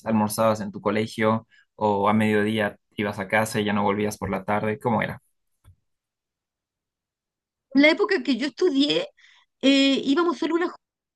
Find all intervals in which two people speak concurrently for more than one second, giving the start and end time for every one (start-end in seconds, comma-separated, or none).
none